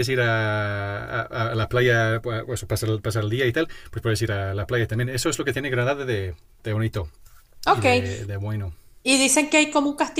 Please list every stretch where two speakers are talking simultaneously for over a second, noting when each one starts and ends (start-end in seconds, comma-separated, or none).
none